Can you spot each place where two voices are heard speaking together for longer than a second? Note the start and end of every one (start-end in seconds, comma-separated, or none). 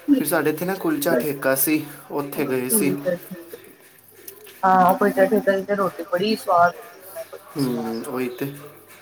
none